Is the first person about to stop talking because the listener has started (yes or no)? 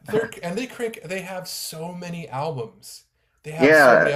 no